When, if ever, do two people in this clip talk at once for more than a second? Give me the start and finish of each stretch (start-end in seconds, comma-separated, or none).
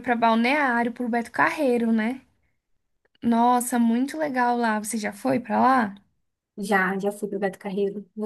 none